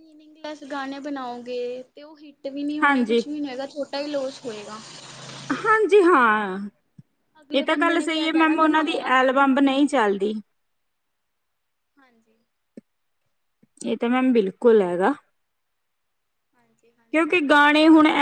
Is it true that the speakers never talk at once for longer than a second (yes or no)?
no